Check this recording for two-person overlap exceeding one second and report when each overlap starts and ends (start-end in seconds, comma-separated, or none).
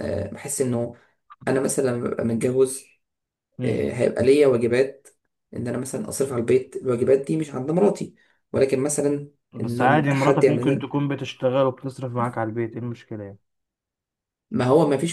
9.5-11.0